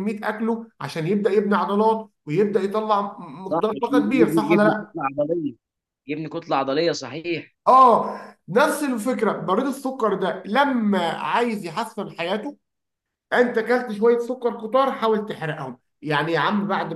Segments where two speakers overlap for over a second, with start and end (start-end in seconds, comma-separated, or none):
3.5-5.0